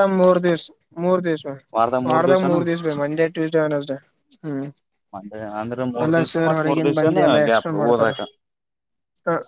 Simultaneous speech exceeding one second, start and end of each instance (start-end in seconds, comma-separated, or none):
6.0-8.1